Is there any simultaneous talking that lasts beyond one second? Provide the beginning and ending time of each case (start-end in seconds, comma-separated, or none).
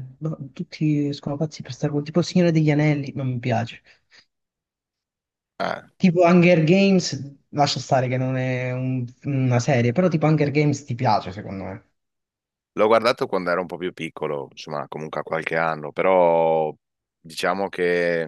none